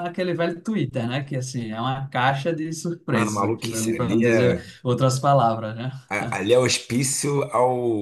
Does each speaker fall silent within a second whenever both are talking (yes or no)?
no